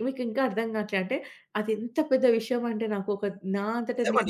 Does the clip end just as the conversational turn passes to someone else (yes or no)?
yes